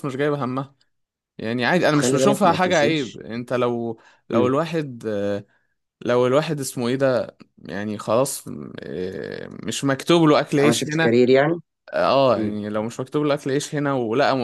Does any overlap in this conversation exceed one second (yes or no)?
yes